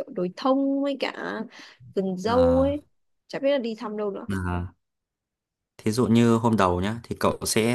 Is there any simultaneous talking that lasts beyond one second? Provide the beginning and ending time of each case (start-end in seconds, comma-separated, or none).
none